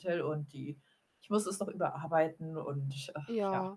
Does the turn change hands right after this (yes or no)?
no